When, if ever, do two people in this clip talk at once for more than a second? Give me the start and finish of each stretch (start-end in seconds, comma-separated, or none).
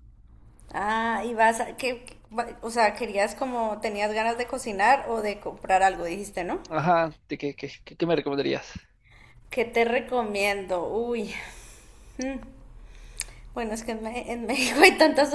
none